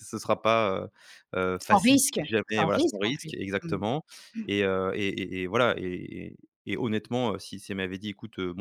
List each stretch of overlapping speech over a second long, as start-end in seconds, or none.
1.6-3.8